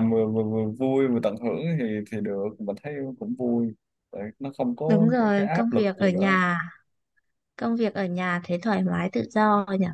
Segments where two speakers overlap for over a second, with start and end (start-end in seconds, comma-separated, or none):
4.9-6.4